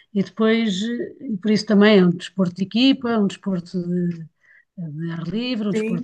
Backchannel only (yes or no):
no